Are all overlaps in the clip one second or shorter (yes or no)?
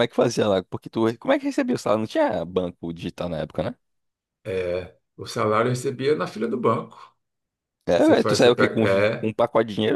no